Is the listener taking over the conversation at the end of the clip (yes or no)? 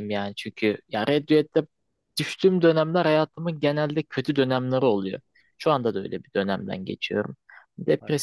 no